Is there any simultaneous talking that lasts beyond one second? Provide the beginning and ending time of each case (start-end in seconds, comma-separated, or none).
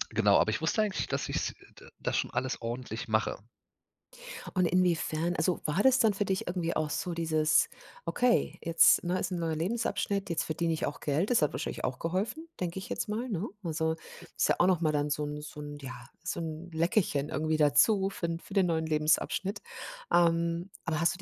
none